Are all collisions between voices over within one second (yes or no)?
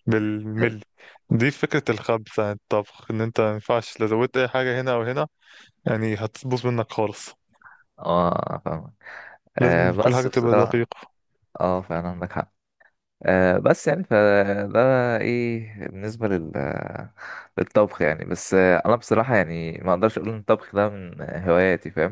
no